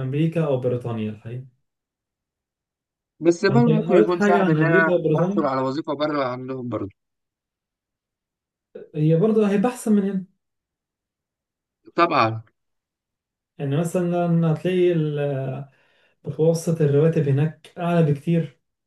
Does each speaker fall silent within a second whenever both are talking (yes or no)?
no